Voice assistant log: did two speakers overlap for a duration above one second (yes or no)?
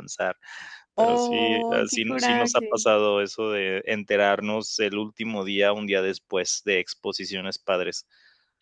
yes